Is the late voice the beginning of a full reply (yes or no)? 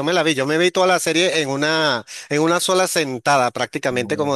no